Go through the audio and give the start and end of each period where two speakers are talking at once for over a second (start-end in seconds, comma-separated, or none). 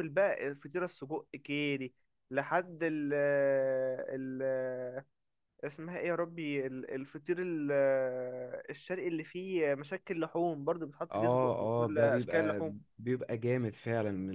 11.1-12.8